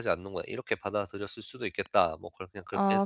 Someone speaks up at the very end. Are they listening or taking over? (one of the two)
taking over